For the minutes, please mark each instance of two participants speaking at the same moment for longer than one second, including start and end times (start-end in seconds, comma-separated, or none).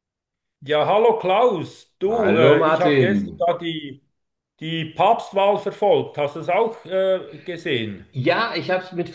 2.0-3.4